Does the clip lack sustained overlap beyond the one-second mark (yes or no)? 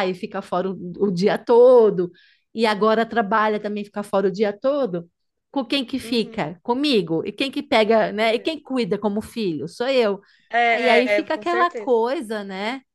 no